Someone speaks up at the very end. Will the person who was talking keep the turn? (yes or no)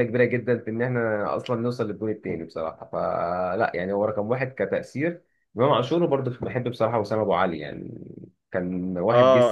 no